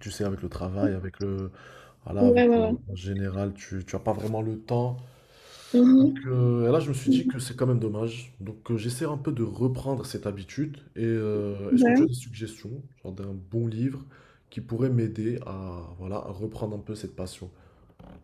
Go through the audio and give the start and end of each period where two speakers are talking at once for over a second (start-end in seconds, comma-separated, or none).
none